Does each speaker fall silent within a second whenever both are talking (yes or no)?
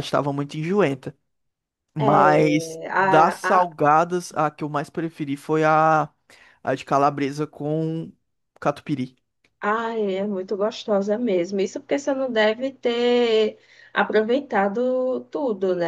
no